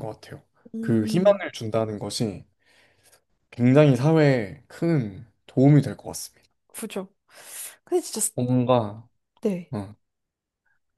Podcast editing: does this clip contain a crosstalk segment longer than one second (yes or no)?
no